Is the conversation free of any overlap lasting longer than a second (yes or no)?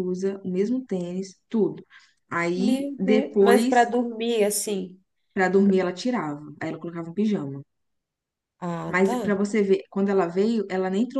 no